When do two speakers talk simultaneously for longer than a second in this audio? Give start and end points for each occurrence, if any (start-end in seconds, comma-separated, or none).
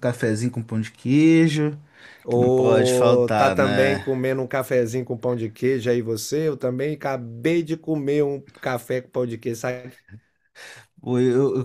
2.3-4.0